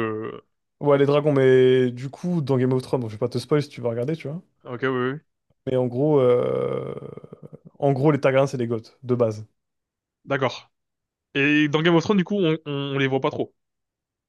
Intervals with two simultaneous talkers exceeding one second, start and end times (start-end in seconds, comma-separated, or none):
none